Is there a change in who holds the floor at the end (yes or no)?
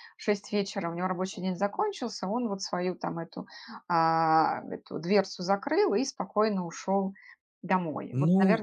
yes